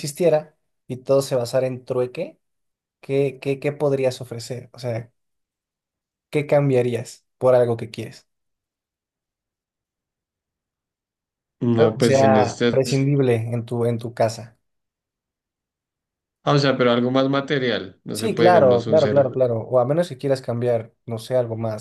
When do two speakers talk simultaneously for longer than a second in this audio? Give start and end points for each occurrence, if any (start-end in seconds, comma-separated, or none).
11.8-13.1, 18.1-19.3